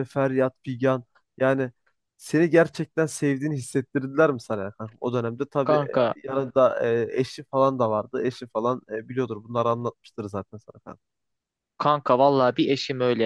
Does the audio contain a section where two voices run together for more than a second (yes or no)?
no